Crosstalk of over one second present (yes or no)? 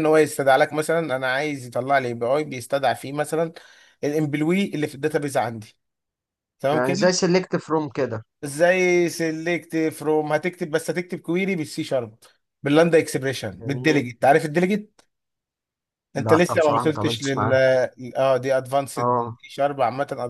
yes